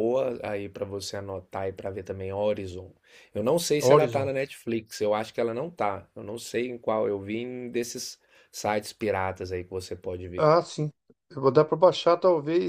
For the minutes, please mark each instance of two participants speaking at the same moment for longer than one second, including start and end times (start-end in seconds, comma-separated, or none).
none